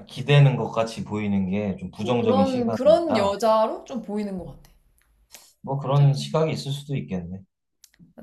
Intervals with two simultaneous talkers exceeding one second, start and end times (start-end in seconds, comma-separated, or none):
2.0-3.4